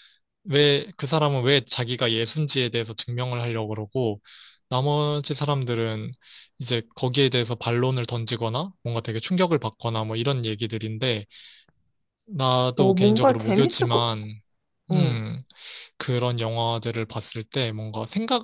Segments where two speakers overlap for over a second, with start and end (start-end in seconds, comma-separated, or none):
12.8-14.1